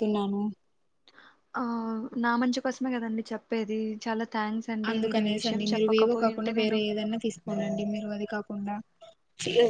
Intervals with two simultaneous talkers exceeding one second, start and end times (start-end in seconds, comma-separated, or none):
4.9-6.8